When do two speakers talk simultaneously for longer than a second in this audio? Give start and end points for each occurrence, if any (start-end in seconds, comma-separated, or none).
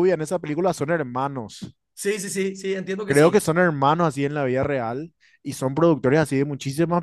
none